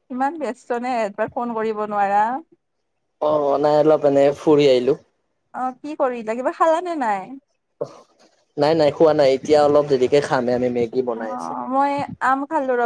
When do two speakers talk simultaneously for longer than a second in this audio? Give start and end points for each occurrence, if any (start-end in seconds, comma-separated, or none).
none